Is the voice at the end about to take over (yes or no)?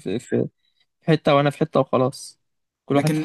yes